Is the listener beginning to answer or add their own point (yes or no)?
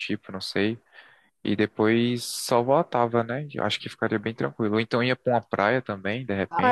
yes